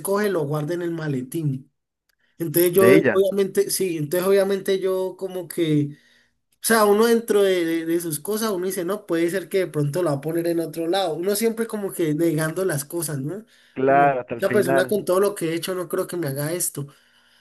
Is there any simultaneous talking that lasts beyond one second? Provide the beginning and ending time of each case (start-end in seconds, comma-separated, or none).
13.9-15.1